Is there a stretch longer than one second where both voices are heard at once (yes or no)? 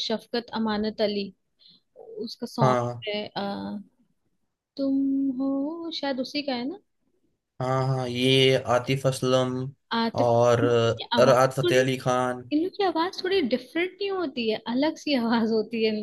yes